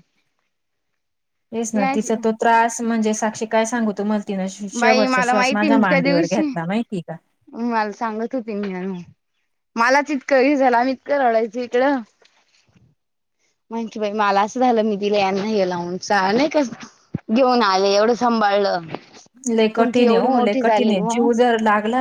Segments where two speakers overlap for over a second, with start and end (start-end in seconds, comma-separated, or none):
4.7-6.4, 19.8-21.3